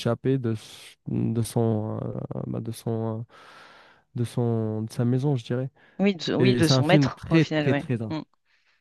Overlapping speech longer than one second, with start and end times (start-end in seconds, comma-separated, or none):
6.4-8.1